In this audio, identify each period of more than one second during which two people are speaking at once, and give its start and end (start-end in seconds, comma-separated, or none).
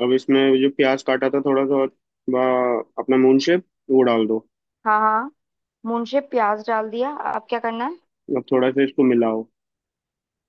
none